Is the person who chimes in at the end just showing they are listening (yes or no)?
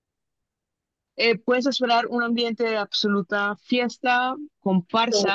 yes